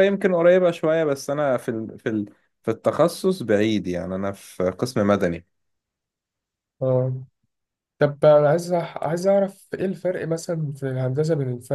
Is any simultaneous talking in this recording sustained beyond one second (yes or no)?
no